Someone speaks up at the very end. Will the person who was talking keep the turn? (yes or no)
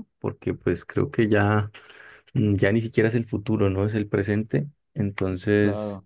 yes